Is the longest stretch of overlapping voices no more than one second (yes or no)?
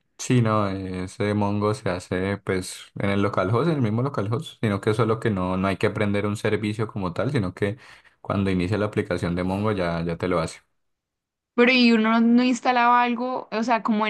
yes